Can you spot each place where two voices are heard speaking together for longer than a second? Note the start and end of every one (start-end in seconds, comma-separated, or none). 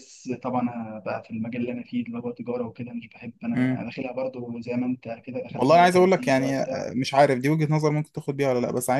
5.5-6.9